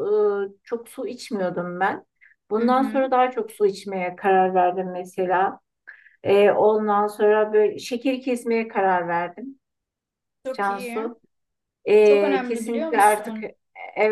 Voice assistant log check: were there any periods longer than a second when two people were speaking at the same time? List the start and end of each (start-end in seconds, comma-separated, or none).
12.0-13.5